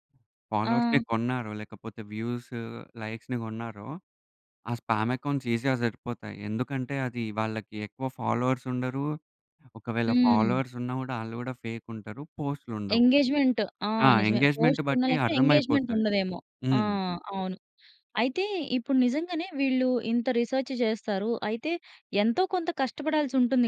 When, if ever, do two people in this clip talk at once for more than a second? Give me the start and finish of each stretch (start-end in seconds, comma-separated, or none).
14.1-16.0